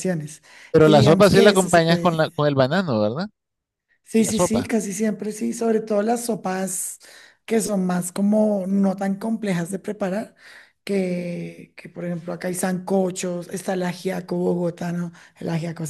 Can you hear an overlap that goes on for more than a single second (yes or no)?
yes